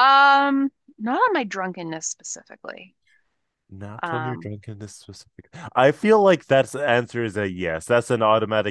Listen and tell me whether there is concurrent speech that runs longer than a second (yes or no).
no